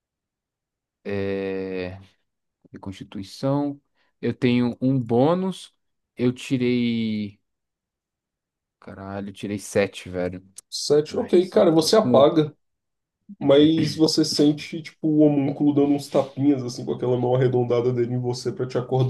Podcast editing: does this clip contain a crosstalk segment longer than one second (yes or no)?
yes